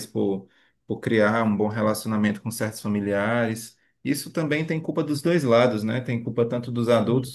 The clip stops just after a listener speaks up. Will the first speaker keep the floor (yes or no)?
yes